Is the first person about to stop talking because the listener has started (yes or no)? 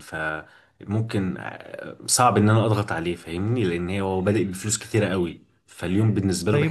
yes